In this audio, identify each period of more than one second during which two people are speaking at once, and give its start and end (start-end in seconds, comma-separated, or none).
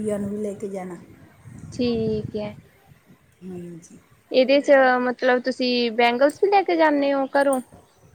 none